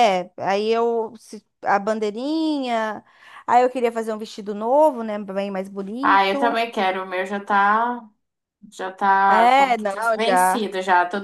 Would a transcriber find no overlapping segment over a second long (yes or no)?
no